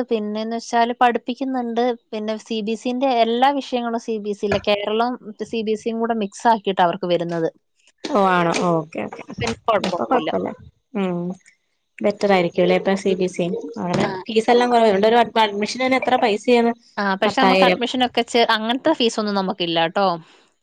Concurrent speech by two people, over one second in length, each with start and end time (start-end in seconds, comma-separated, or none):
none